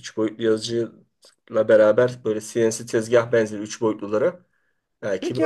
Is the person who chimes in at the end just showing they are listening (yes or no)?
no